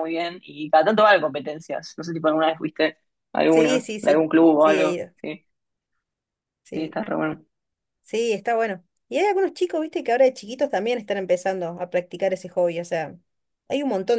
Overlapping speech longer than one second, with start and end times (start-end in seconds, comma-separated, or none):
3.5-5.1